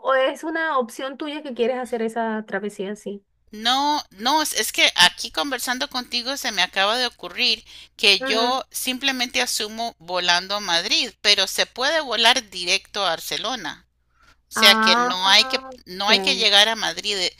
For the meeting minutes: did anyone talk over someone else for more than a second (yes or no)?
no